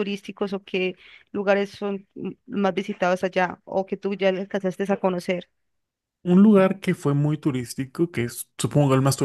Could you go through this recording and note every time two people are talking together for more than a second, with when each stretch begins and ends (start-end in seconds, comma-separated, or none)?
none